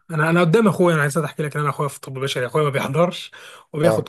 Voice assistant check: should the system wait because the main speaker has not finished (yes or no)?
yes